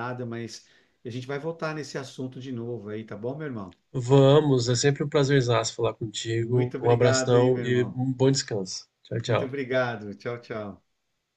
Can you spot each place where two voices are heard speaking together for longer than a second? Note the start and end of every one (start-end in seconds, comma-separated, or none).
6.3-8.0